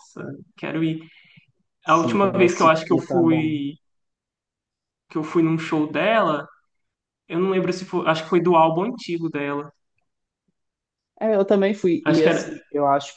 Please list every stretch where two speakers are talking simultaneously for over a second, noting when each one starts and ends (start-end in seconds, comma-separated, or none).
1.9-3.6